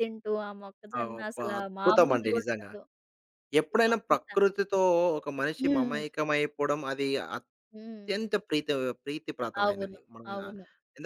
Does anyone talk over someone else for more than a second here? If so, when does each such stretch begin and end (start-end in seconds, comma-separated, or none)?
1.0-2.7